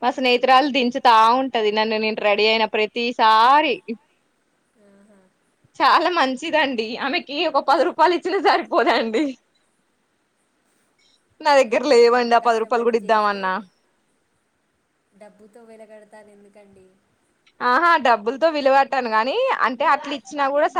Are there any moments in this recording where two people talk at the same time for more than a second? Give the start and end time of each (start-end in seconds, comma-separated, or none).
11.7-13.4